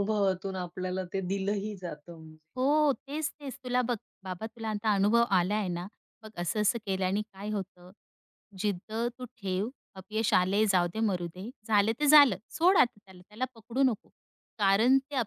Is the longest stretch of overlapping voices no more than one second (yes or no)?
yes